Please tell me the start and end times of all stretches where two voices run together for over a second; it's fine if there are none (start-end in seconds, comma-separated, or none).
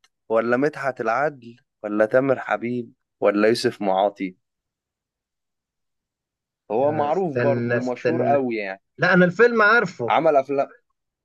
6.8-8.4